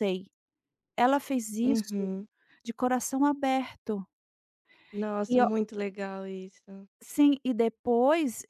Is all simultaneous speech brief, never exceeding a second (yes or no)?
yes